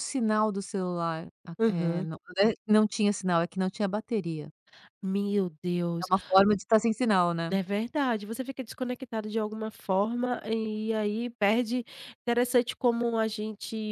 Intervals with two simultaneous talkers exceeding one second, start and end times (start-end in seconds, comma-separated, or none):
none